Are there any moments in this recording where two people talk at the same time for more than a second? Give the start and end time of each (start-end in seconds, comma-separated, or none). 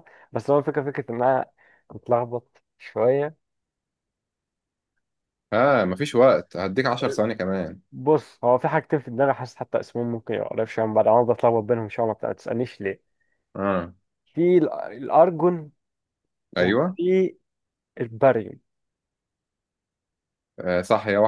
none